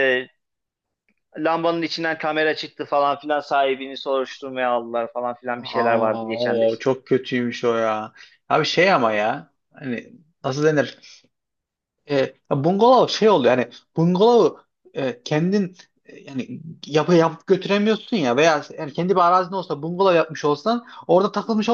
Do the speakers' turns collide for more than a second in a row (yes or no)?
yes